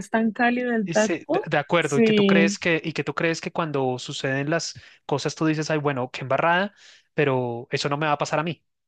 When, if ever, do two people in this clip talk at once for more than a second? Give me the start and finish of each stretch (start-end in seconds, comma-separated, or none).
0.8-2.6